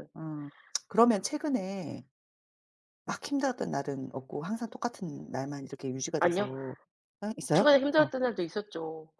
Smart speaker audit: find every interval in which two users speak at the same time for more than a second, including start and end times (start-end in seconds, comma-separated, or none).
none